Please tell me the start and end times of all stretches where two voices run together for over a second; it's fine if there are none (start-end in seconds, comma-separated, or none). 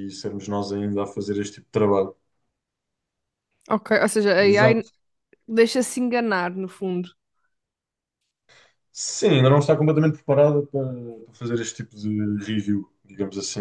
none